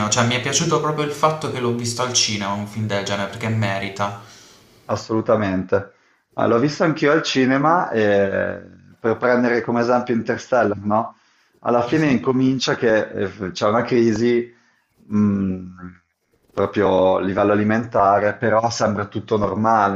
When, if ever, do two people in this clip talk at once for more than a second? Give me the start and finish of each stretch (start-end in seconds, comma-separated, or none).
none